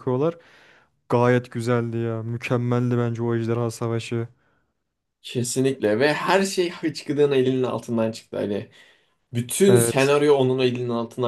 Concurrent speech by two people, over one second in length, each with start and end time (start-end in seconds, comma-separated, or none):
none